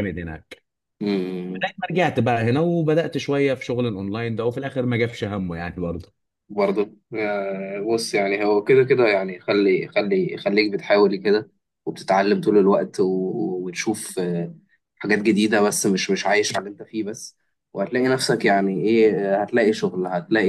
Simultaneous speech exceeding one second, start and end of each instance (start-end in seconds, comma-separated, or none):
none